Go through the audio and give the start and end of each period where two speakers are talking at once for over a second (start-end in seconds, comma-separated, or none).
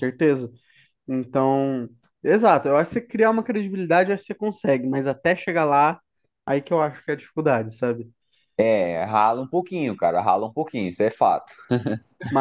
none